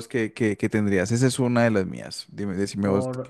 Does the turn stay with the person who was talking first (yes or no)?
no